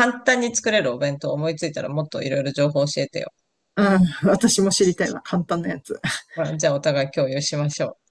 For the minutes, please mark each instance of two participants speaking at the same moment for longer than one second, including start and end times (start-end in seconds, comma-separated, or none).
none